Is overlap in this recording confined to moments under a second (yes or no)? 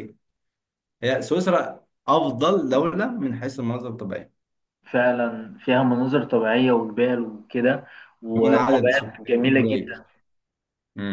no